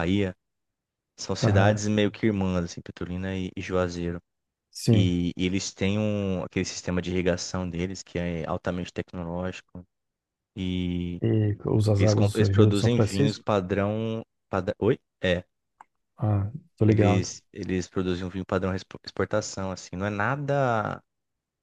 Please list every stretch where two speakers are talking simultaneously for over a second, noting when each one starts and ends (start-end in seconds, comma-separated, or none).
12.0-13.4